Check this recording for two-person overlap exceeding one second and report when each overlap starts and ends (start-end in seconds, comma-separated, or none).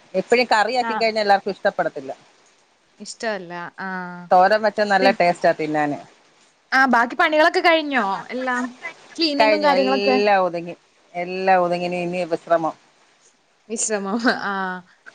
none